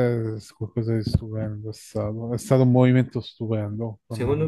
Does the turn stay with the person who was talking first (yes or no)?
no